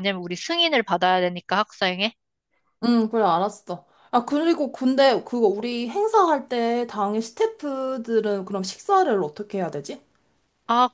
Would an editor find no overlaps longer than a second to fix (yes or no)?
yes